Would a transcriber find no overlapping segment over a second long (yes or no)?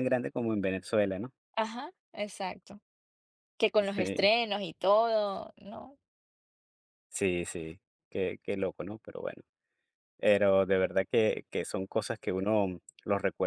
yes